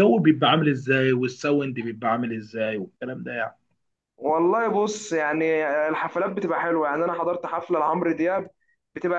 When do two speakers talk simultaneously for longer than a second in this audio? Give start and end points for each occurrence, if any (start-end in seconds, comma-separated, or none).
none